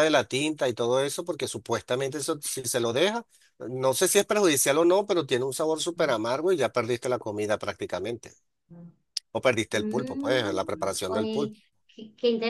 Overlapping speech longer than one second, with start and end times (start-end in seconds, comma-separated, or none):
9.7-11.5